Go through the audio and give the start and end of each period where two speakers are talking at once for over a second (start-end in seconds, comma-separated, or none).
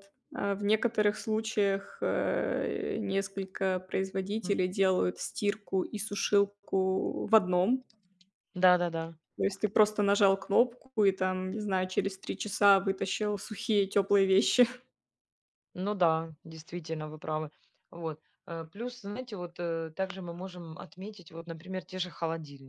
none